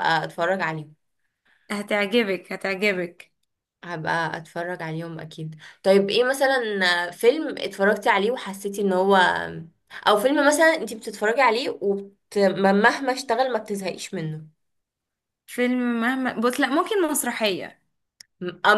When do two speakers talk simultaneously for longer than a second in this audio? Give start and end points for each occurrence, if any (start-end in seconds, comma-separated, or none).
none